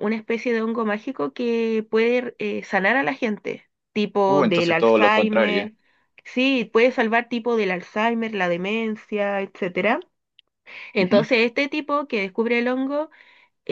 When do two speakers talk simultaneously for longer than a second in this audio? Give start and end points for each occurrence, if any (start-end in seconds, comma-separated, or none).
4.3-5.7